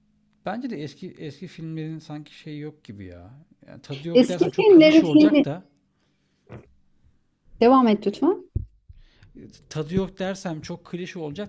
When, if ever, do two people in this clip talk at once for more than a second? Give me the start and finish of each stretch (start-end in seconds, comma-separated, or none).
4.1-5.5